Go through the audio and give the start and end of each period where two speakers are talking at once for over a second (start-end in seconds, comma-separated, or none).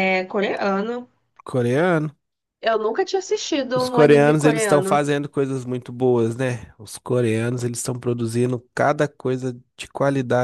3.7-5.0